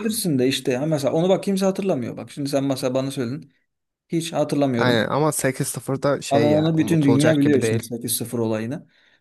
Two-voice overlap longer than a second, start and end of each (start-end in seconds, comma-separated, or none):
6.3-7.8